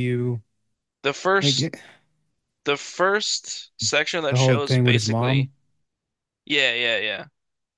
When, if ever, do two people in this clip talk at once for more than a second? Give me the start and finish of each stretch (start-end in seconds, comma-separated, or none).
4.3-5.5